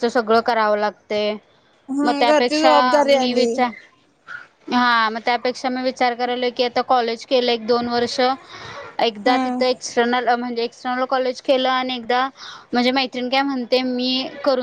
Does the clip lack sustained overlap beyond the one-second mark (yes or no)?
no